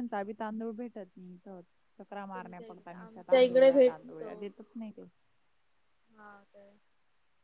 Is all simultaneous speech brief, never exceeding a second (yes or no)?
no